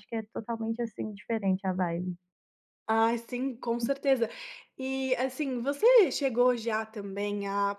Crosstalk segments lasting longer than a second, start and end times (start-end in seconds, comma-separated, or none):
none